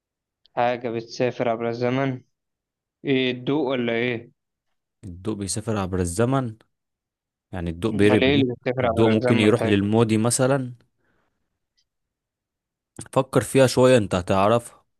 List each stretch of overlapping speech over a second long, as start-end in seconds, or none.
7.9-9.7